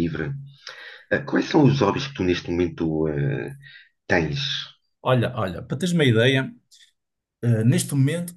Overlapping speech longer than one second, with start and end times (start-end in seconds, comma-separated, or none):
none